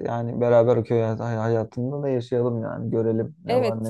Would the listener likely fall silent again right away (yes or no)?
no